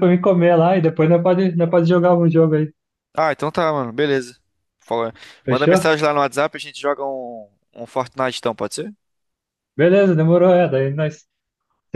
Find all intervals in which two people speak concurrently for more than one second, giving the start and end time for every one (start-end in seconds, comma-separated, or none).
none